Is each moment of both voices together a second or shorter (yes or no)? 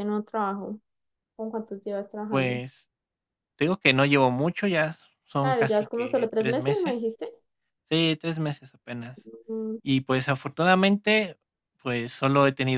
no